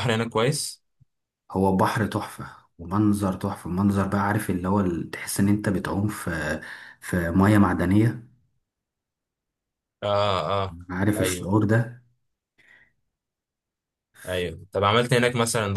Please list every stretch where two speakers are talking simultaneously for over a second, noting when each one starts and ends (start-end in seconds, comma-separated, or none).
none